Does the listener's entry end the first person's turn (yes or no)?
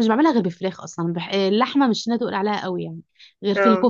no